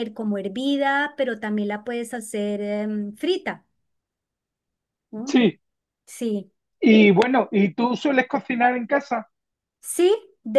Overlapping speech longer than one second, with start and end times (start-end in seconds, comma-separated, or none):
none